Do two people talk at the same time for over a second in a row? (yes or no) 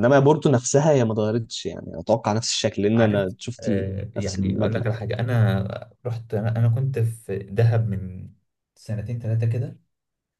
yes